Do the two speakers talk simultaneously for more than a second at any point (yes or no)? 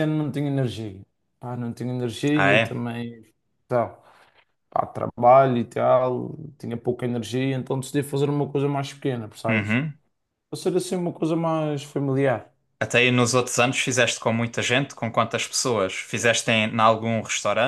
no